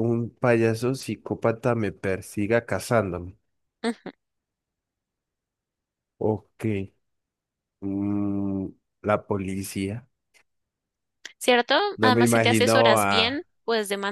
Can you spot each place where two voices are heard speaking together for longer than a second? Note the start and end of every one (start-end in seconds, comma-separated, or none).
12.0-13.4